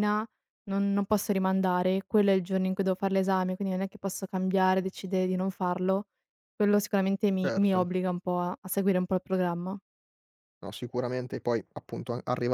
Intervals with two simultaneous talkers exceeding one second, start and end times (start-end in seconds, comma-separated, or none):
none